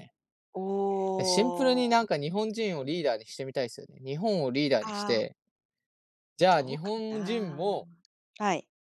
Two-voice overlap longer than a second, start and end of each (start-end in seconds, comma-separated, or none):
6.5-7.8